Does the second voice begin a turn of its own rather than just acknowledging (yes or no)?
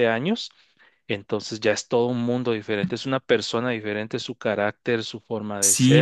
yes